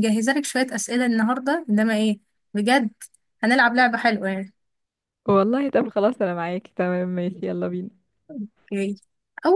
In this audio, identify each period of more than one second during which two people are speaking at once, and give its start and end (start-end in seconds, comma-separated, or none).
none